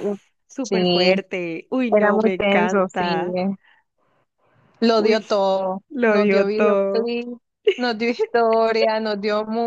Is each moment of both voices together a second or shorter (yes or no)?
no